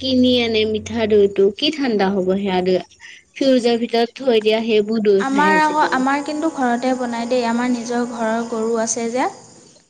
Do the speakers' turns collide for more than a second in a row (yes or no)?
no